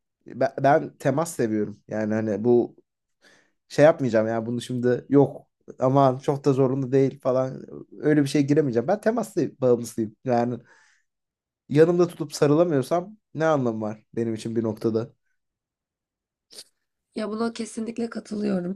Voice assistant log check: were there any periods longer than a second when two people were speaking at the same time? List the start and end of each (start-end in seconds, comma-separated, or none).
none